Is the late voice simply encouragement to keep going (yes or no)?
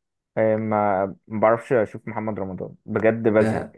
no